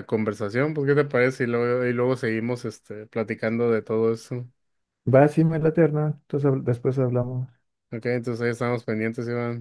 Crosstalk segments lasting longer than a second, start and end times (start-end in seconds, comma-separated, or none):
none